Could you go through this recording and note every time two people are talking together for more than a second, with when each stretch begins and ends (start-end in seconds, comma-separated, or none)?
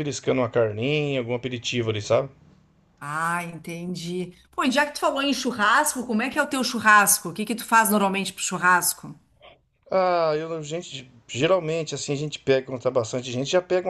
none